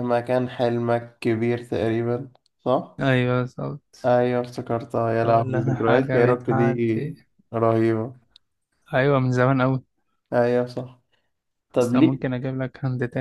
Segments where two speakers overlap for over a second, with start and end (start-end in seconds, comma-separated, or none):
5.1-7.2